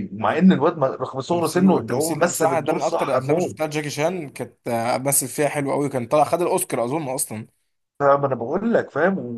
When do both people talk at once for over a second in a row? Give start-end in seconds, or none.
1.3-3.8